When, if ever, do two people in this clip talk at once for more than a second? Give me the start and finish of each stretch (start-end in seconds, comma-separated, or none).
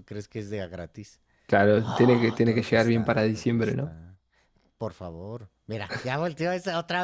1.7-3.9